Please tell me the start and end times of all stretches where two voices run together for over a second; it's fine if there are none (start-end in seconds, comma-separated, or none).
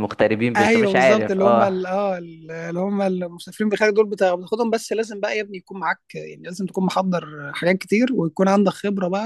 0.5-1.8